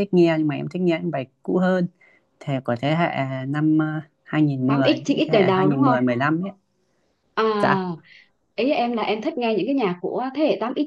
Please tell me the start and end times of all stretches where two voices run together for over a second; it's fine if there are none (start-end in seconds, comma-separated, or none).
4.7-6.0